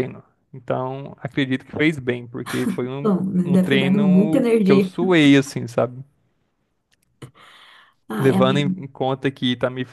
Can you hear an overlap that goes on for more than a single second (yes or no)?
yes